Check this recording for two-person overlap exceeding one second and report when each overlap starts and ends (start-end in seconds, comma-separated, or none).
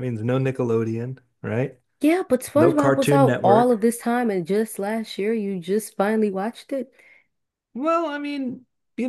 2.5-3.8